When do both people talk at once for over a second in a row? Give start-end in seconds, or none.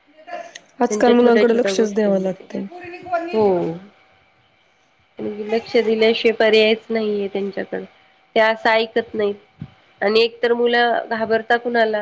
0.9-2.4